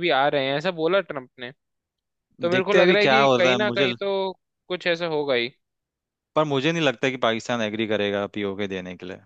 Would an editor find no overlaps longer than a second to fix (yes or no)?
no